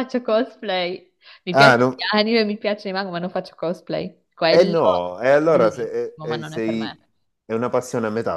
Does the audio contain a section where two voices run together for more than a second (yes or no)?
yes